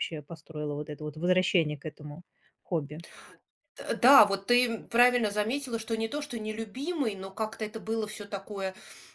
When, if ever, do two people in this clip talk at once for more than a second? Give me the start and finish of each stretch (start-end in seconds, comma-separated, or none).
none